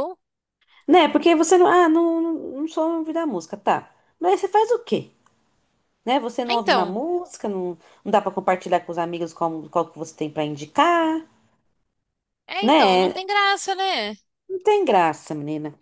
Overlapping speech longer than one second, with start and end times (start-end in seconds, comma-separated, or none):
none